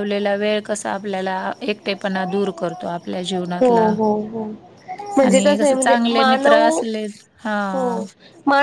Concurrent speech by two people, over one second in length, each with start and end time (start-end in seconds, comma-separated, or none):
5.2-6.8